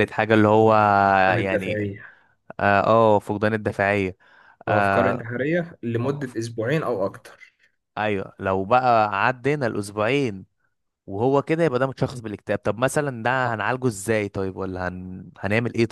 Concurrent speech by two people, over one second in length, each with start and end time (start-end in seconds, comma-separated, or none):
none